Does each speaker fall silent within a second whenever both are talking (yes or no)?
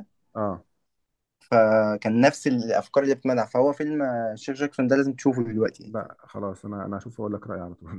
yes